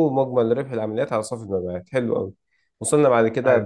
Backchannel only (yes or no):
yes